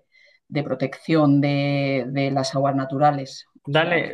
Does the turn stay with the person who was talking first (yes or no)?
no